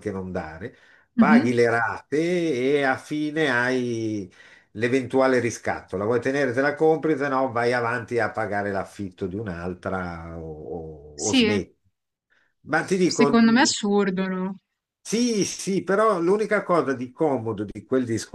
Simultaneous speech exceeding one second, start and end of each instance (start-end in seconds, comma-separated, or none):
none